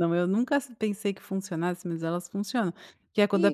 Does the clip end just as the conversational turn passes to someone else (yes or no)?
no